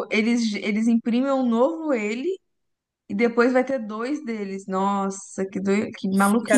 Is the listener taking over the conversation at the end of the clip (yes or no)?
yes